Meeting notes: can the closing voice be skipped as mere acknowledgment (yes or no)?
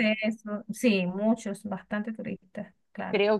no